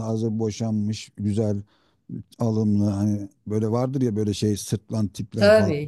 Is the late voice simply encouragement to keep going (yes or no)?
no